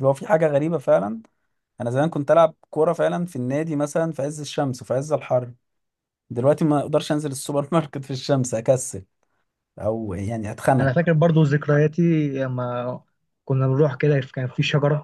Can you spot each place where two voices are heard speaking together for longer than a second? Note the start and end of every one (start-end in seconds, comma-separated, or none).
none